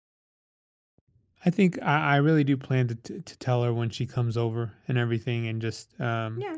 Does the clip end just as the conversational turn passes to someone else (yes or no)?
yes